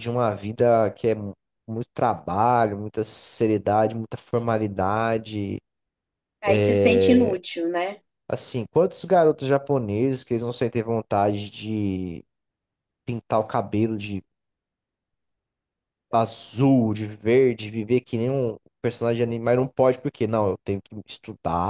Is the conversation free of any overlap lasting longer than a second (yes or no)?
yes